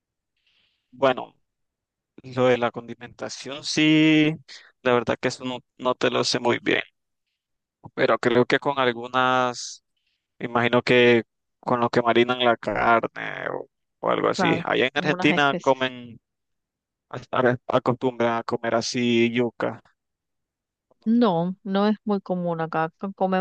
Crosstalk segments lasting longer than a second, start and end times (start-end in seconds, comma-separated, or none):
14.3-15.9